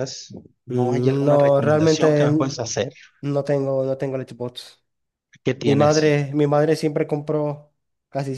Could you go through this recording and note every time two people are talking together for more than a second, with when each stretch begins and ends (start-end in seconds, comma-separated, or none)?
0.7-2.6